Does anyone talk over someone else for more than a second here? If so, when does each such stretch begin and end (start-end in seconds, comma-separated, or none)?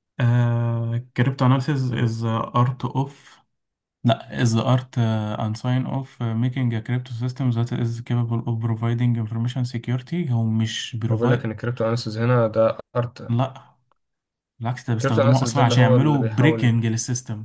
14.9-16.8